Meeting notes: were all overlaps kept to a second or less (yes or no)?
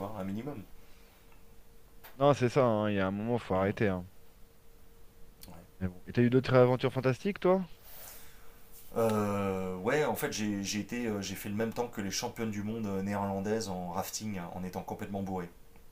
yes